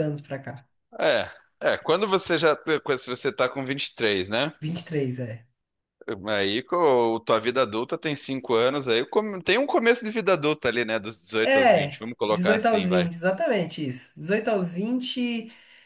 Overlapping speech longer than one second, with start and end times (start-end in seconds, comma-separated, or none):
11.4-13.1